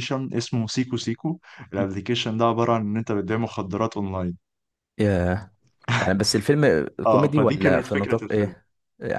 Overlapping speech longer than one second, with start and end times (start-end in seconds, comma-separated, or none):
7.1-8.5